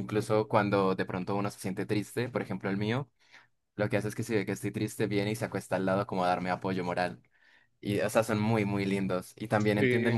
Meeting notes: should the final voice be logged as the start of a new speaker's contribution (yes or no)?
no